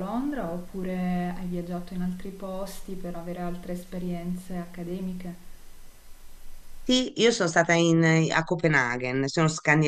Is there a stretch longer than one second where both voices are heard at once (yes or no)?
no